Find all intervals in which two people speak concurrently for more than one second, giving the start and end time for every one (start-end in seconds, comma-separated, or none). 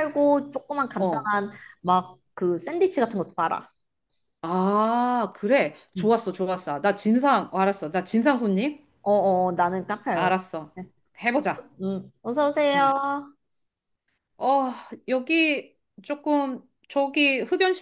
none